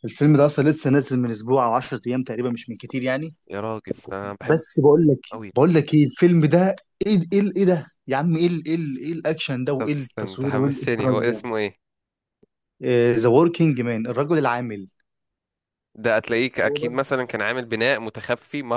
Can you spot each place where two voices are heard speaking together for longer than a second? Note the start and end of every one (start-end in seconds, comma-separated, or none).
9.8-11.4